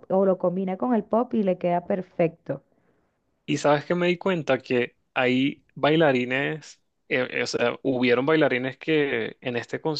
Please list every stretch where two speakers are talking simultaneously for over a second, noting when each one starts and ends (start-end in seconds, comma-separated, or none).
none